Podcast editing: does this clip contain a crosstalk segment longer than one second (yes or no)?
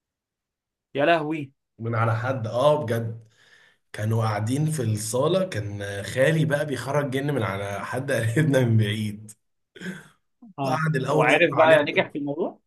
yes